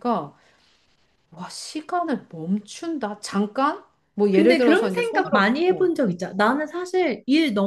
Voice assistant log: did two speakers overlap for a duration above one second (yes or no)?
yes